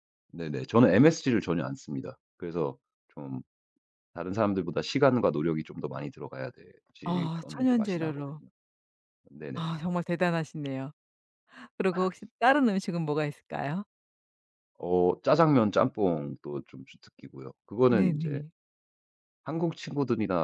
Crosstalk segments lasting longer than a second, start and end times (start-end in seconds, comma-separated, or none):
7.0-8.4